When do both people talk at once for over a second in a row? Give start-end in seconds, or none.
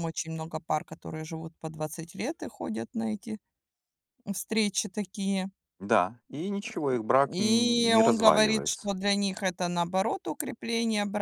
7.3-8.9